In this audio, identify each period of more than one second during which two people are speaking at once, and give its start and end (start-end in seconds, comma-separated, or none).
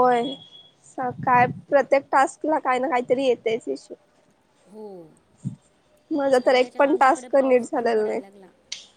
6.4-8.2